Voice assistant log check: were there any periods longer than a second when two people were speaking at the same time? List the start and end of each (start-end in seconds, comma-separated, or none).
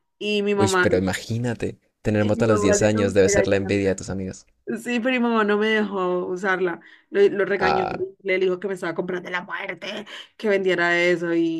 2.2-3.7